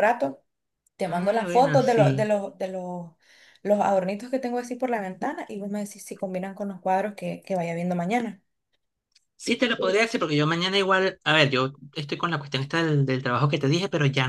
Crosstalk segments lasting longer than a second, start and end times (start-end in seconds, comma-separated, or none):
1.1-2.3